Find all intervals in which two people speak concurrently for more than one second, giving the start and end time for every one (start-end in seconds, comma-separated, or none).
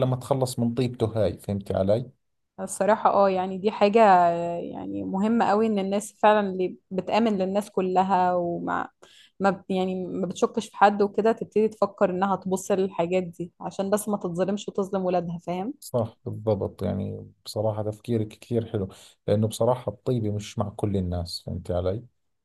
none